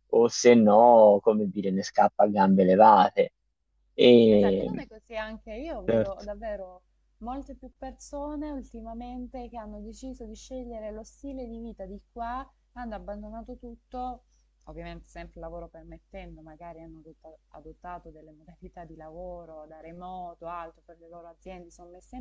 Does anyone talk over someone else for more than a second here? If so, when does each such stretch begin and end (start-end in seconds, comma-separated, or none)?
none